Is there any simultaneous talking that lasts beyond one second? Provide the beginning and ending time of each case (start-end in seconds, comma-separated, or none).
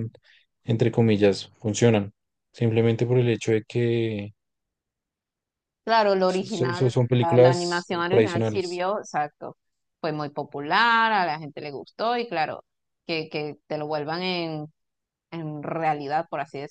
6.3-8.8